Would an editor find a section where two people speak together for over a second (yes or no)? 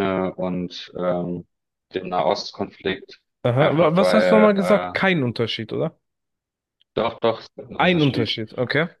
yes